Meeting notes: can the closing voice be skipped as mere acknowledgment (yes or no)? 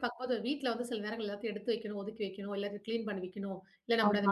yes